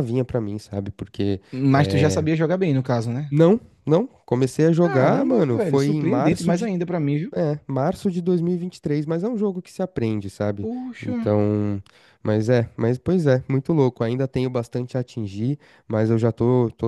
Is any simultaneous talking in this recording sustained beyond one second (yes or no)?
yes